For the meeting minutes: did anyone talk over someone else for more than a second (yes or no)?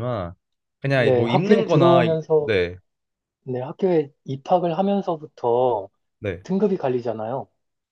yes